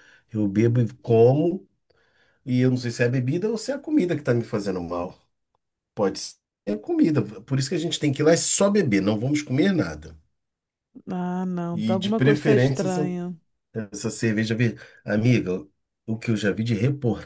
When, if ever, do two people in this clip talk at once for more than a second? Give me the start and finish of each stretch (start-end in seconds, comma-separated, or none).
11.7-13.1